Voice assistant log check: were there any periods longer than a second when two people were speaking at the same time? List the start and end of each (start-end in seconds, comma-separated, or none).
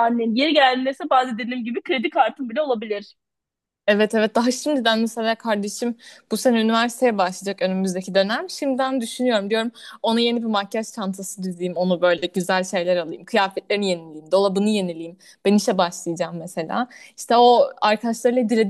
none